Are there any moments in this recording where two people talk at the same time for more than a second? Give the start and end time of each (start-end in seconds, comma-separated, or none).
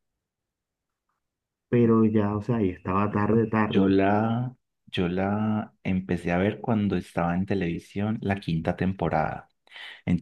none